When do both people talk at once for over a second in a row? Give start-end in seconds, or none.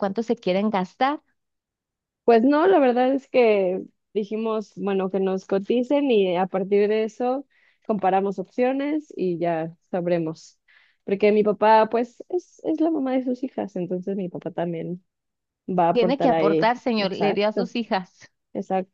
15.9-17.7